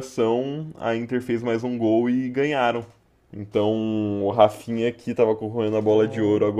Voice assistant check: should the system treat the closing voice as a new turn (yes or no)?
no